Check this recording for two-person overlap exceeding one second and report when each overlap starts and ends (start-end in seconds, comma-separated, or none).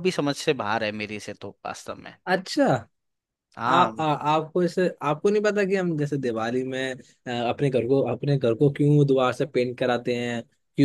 none